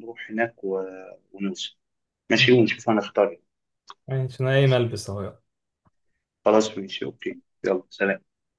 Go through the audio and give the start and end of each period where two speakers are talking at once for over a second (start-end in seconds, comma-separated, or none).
none